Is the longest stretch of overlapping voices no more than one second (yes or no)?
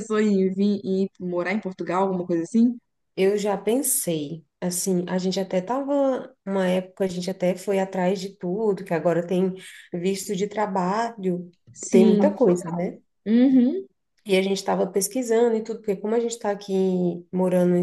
yes